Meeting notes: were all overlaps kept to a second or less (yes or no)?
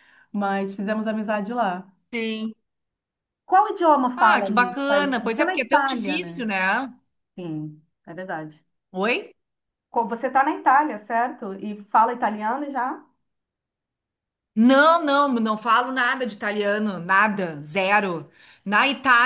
no